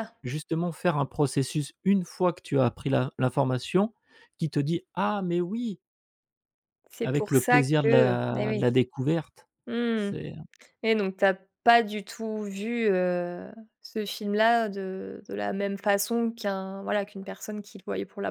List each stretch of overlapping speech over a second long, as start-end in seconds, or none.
7.0-8.7